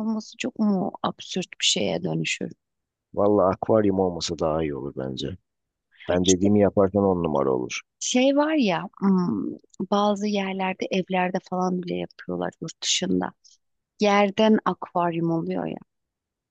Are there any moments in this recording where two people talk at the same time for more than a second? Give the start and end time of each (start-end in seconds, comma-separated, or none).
none